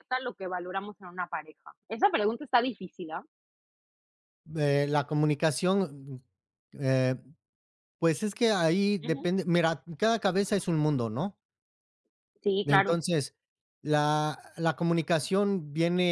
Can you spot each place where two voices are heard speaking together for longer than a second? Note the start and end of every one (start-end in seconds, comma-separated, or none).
none